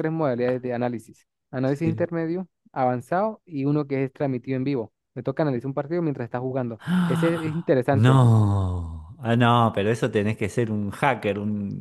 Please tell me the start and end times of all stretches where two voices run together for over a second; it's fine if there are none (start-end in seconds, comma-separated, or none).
6.8-8.2